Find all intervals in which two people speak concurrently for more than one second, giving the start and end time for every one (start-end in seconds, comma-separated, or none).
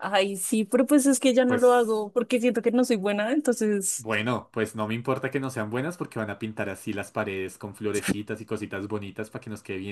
none